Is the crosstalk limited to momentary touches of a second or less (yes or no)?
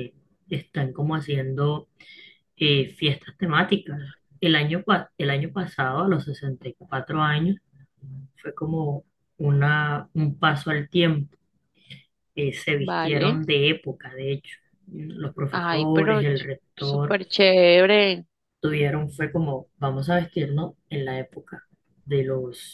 no